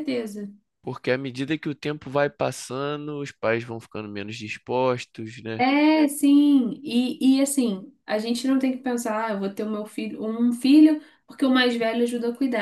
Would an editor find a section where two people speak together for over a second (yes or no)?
no